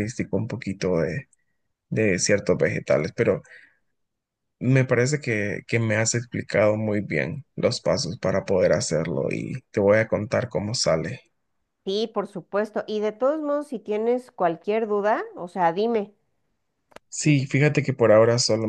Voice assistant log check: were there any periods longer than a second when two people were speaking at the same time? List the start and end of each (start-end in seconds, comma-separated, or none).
none